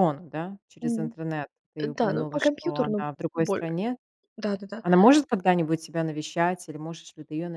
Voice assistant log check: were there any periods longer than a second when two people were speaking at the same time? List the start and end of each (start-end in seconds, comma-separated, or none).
2.0-3.6